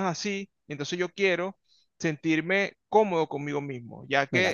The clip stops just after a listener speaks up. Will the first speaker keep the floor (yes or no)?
no